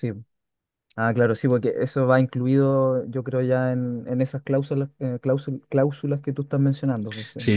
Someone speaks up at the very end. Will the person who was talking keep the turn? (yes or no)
no